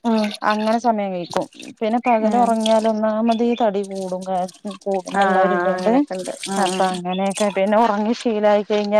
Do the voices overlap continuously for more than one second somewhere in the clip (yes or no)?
no